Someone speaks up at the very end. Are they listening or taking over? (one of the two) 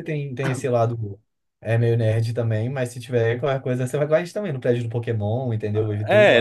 taking over